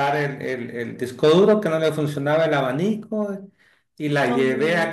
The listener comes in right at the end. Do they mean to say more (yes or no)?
no